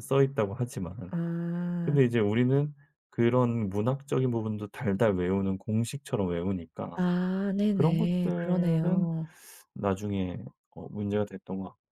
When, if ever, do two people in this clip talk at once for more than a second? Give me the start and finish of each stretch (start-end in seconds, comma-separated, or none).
7.7-9.1